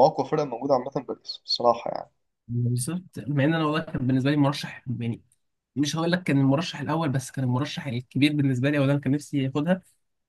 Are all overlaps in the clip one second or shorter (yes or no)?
yes